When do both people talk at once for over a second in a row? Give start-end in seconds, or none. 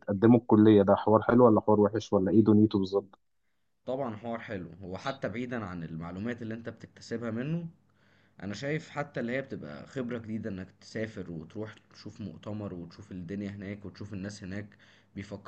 none